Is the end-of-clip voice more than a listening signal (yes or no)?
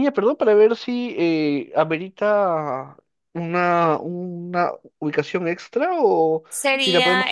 yes